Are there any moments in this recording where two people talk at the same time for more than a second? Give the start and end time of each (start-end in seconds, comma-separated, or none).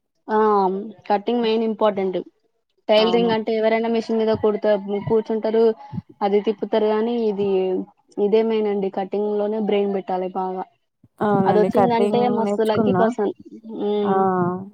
11.5-13.0